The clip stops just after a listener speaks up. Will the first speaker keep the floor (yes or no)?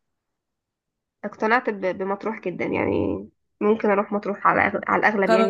no